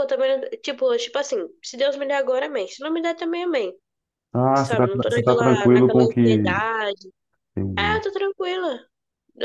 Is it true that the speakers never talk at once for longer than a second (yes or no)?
no